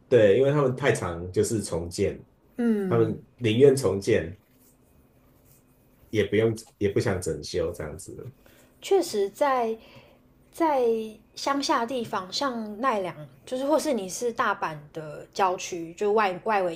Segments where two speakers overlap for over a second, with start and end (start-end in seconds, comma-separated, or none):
none